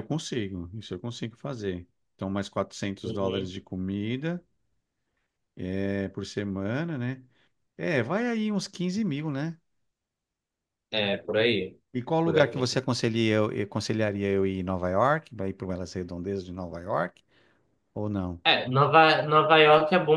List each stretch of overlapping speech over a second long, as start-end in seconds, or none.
none